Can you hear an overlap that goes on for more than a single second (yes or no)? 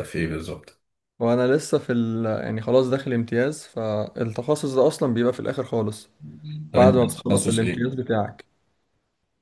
yes